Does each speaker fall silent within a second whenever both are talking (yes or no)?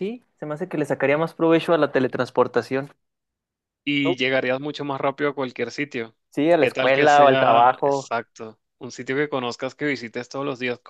no